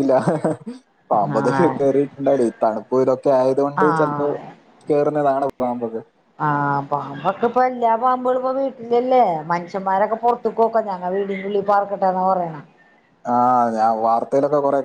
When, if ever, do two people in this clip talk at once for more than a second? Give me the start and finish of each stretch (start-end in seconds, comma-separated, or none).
none